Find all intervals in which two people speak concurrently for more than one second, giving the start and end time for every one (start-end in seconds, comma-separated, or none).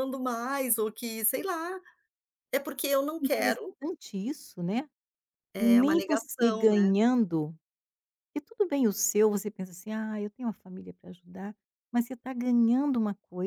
5.6-6.9